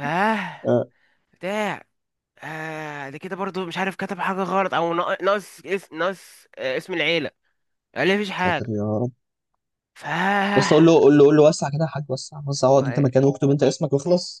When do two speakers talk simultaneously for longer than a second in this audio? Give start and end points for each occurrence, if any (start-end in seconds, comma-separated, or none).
none